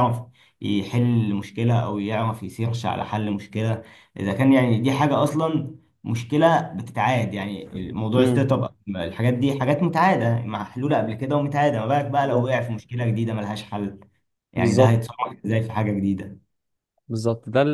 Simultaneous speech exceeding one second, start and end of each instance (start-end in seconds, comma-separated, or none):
none